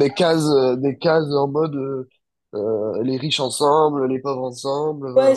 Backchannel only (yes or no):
no